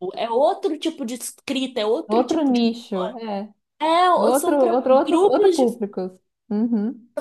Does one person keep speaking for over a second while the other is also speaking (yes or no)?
yes